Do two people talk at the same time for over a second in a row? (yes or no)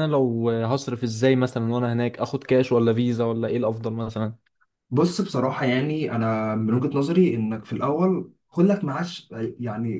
no